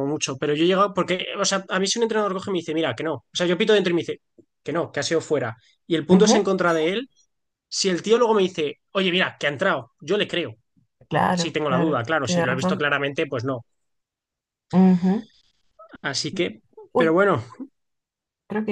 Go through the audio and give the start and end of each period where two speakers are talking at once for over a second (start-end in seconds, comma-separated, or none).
11.3-12.9